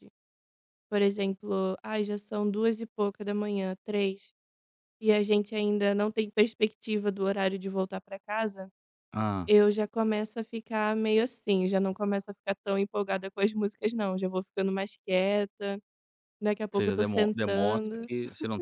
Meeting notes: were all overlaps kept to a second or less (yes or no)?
no